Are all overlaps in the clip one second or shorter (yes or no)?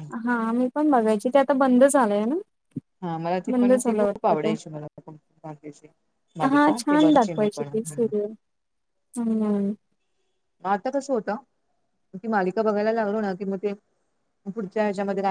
yes